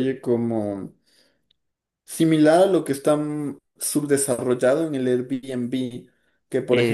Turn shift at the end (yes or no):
no